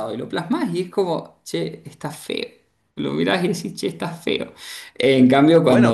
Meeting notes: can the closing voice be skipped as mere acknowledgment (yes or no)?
no